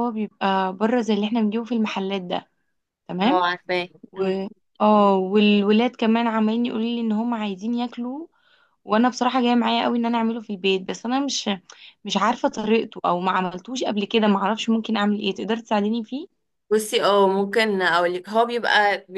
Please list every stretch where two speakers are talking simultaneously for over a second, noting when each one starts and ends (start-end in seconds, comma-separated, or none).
none